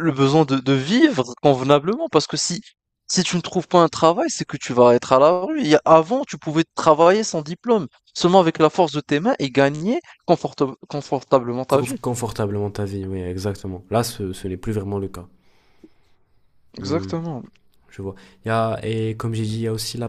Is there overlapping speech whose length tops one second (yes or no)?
no